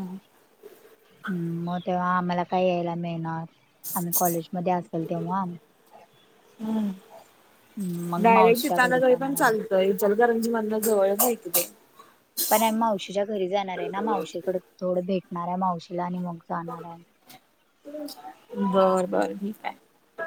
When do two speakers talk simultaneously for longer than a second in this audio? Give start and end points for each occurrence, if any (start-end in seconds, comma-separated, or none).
8.2-9.5